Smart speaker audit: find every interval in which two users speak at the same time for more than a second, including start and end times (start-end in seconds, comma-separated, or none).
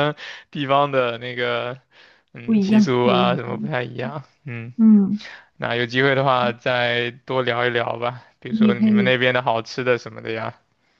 2.4-3.7